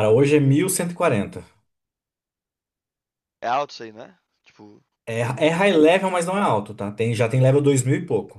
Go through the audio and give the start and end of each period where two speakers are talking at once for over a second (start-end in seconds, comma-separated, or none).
none